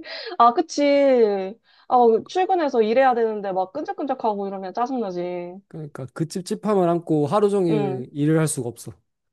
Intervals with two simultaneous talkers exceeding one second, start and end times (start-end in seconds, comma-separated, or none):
none